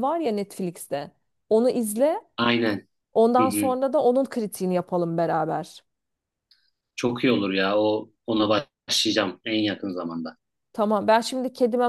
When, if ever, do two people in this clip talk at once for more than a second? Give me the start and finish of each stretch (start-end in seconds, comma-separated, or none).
none